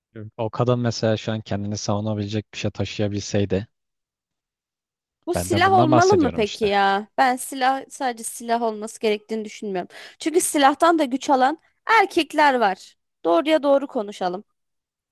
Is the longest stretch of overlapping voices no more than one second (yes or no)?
no